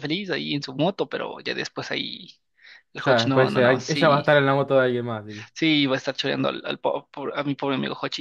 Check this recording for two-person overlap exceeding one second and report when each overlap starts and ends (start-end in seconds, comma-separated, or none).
3.0-4.2